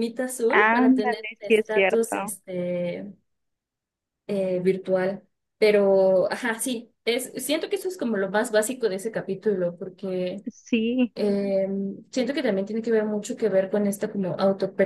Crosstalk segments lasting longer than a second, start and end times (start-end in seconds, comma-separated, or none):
0.5-2.4